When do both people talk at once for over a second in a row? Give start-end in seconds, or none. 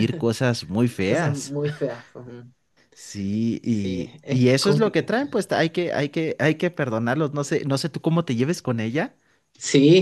3.6-5.3